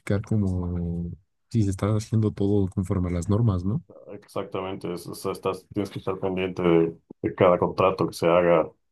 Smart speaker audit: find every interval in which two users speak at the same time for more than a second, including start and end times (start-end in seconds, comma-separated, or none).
none